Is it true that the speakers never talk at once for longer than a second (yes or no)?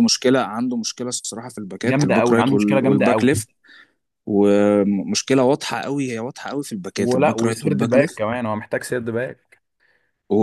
no